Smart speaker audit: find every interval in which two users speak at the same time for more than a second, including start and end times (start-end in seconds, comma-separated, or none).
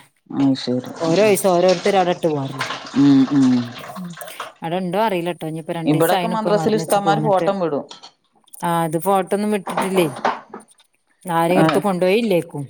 5.9-7.5